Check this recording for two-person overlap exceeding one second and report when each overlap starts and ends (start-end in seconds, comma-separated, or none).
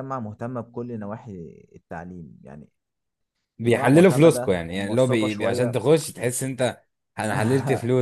3.6-5.8